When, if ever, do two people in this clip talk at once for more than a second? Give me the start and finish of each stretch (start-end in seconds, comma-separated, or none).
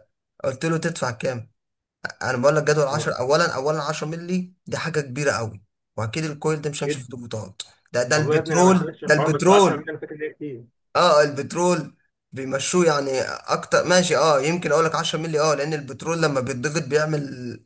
8.1-9.9